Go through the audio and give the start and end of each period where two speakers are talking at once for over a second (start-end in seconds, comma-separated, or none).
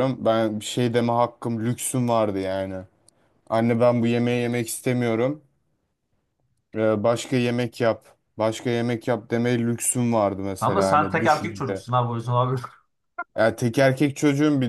10.6-11.8